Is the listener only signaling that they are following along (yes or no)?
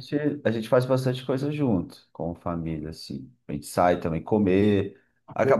yes